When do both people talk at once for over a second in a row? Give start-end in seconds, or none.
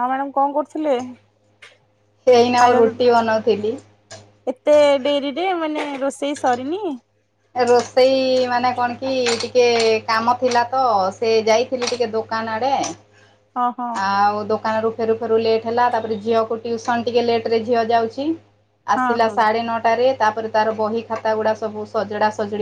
none